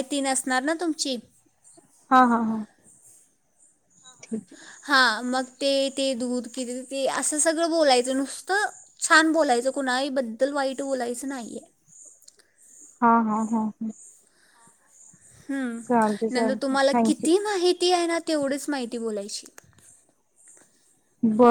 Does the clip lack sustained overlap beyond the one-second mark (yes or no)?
no